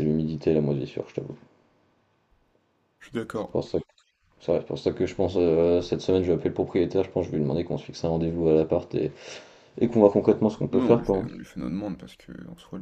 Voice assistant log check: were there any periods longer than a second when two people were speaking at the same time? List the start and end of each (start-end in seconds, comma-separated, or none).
none